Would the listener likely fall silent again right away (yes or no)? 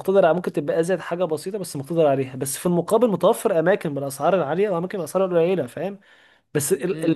no